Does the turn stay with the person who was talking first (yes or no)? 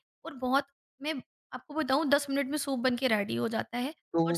no